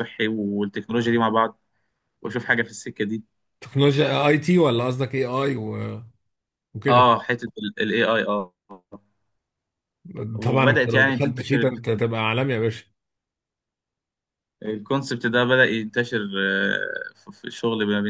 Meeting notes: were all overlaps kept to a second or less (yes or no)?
no